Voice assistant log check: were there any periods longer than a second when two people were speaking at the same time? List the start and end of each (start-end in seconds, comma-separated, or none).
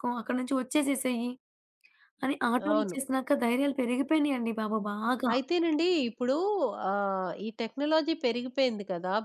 none